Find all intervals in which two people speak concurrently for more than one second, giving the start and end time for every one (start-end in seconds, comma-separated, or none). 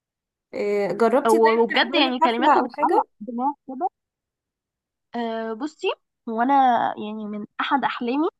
1.3-3.1